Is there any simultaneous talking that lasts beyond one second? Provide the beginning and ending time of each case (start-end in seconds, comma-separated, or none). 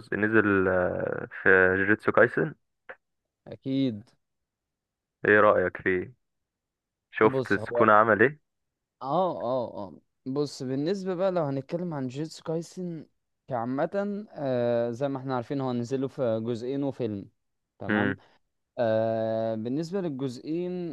none